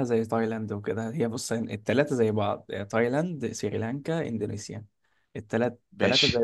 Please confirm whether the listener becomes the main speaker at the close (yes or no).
no